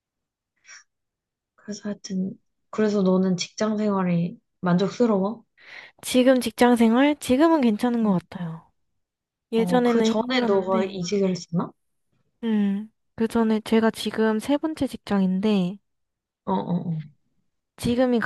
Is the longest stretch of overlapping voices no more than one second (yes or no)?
no